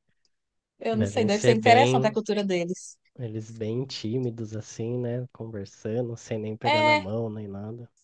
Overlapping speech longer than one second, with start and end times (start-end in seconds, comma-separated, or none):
0.9-2.1